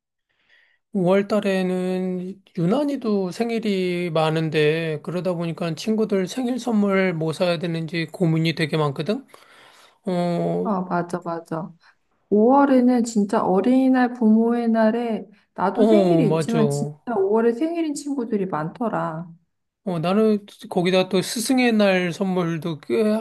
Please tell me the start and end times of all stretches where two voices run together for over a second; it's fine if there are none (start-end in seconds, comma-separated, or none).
15.7-17.1